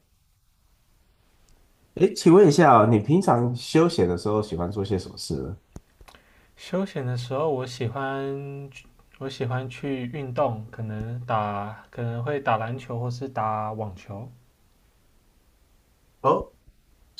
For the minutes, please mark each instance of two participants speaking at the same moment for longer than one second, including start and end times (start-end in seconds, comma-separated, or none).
none